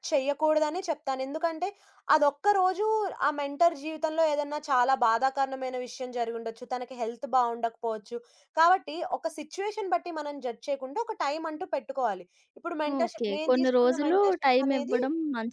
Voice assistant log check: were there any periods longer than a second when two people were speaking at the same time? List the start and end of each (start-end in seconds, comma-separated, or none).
13.0-15.0